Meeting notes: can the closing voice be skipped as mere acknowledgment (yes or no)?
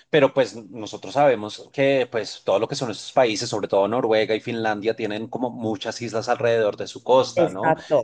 yes